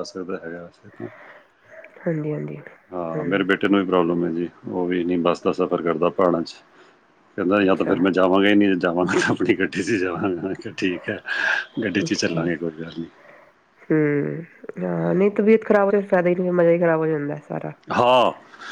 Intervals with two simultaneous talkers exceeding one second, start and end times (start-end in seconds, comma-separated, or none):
none